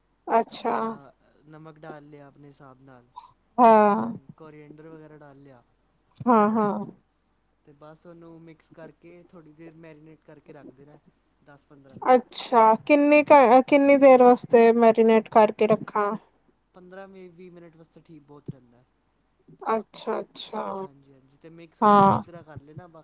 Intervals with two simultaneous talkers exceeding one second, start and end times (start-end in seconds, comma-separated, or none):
none